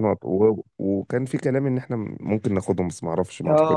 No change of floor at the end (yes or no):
no